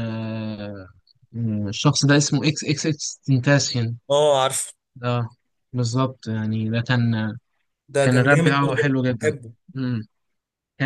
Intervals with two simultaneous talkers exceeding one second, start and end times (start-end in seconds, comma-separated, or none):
8.0-9.3